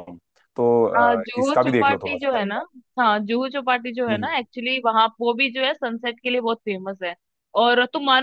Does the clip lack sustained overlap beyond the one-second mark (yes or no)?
no